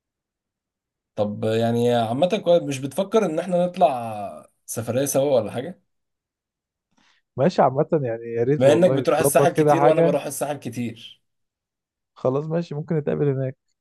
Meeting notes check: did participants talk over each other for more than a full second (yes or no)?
yes